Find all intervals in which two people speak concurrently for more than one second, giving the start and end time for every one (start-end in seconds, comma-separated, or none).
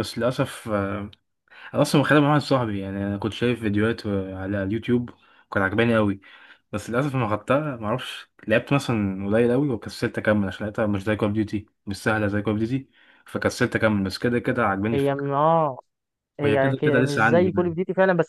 16.4-17.8